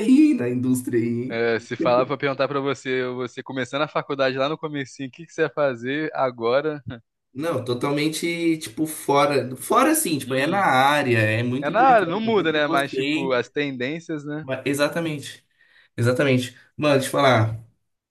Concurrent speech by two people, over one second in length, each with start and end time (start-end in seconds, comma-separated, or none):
11.6-13.3